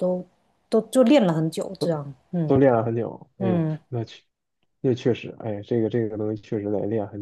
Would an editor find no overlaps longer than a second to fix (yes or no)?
yes